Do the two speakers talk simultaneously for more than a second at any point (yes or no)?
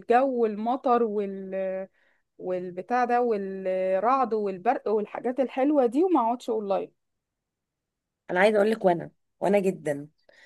no